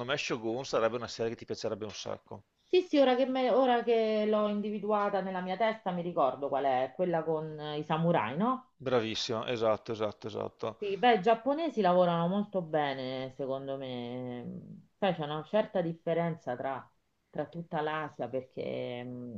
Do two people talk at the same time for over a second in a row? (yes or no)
no